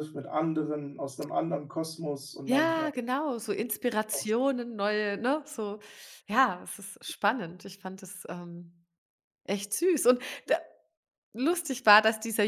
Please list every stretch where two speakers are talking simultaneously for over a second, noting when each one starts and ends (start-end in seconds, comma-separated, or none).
none